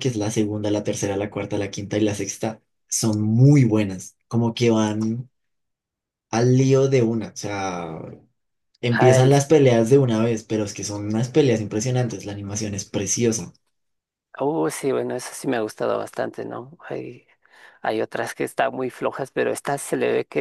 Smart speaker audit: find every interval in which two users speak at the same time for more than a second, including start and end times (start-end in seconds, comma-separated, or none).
none